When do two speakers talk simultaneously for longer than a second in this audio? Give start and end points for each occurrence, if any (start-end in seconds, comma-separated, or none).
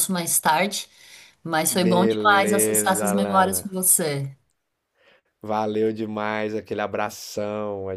1.7-3.6